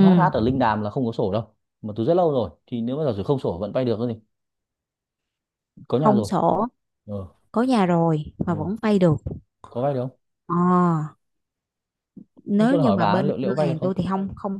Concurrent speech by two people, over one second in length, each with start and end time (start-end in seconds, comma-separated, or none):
12.6-13.9